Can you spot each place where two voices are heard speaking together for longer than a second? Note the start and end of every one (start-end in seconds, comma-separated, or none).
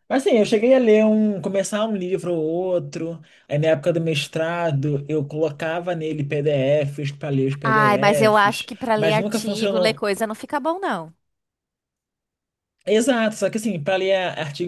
7.6-10.0